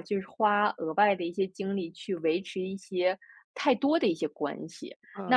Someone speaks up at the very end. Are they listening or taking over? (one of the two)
taking over